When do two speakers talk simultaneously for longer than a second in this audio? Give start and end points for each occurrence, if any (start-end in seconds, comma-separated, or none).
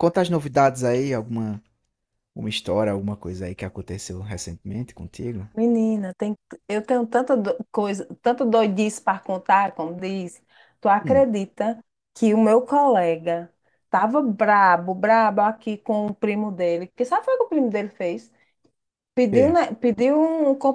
none